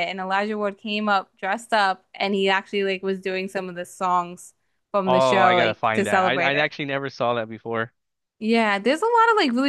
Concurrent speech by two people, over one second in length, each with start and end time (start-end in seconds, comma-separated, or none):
5.1-6.7